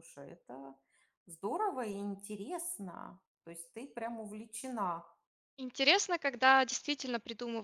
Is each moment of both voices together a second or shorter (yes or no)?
yes